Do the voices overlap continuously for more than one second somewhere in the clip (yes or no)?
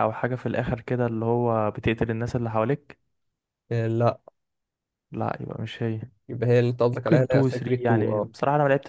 yes